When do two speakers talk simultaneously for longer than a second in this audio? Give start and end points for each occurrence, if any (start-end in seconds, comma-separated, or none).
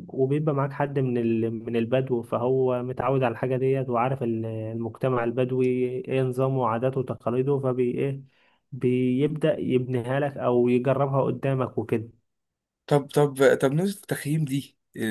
none